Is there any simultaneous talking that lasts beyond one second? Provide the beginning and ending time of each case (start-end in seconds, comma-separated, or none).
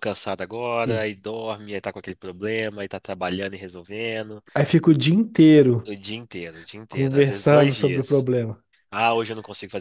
6.9-8.3